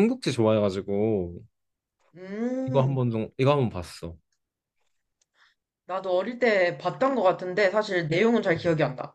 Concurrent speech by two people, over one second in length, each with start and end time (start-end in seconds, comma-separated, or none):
none